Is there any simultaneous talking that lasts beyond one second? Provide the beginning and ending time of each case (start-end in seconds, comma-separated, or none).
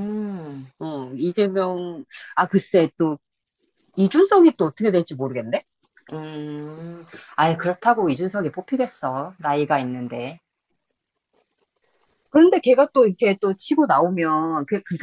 none